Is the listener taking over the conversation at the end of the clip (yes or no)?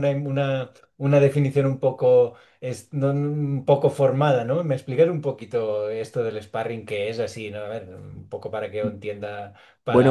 yes